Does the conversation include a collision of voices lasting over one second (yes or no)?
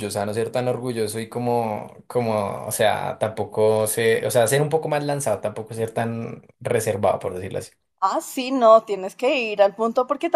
no